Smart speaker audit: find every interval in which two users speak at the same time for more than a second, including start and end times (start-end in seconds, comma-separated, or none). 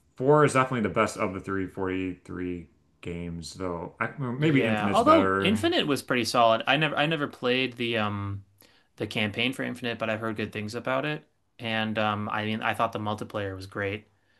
4.4-5.6